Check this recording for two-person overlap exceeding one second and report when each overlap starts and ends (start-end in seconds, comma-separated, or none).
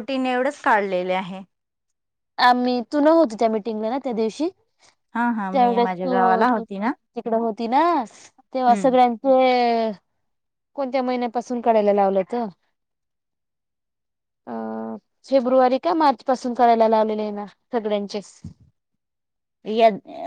5.5-6.9